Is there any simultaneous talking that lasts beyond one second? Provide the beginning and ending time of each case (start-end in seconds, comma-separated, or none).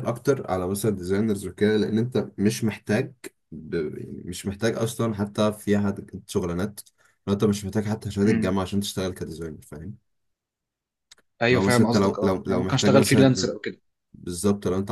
11.5-13.5